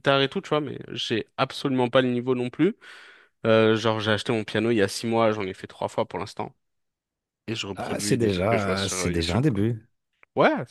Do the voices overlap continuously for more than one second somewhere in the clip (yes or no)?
yes